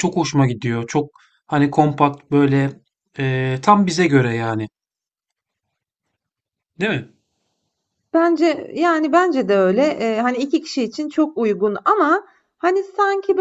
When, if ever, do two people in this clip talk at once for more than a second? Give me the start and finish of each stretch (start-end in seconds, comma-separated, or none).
none